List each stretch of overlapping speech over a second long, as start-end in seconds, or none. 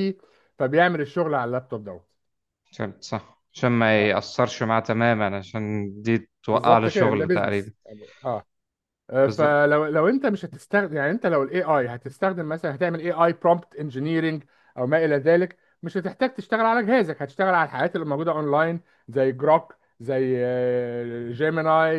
6.5-7.7